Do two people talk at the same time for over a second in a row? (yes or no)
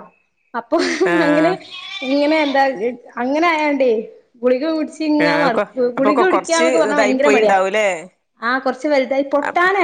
yes